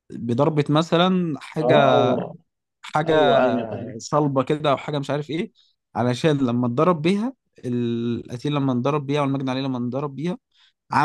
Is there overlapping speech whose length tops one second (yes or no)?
no